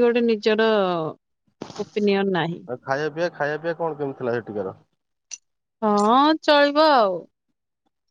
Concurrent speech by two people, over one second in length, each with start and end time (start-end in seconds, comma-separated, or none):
none